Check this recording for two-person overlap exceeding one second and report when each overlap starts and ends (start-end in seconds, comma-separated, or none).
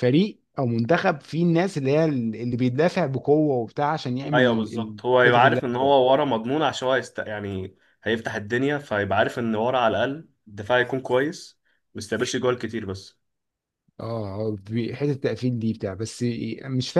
4.3-5.9